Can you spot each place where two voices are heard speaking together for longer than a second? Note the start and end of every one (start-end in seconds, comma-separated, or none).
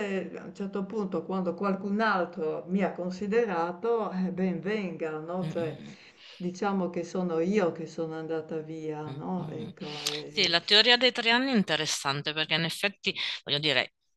none